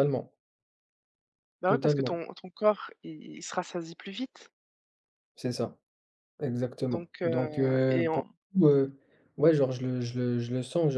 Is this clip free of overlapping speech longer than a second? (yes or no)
no